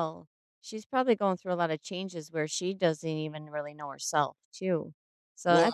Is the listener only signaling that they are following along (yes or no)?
yes